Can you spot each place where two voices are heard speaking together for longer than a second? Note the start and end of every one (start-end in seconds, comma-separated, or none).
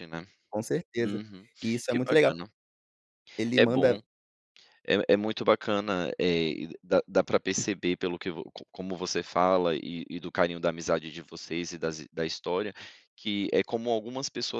none